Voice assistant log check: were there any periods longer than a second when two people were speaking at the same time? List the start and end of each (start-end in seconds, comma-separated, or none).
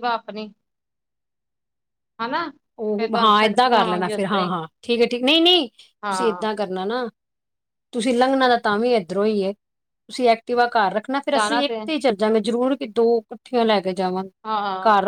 3.0-4.6